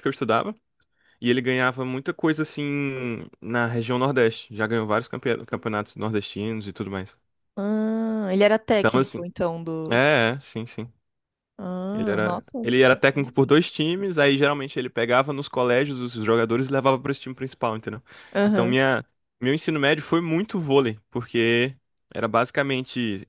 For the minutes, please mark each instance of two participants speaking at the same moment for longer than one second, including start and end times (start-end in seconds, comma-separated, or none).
11.9-13.5